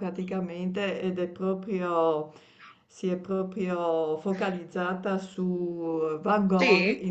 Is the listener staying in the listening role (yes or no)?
yes